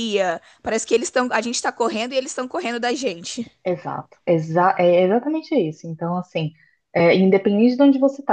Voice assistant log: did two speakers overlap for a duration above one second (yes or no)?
no